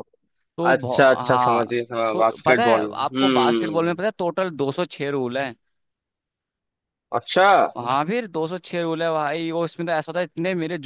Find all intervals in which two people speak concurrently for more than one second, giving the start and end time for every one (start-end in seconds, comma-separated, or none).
0.7-4.0